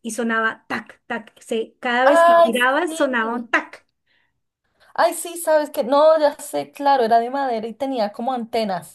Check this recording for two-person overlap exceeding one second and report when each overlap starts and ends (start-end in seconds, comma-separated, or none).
2.0-3.5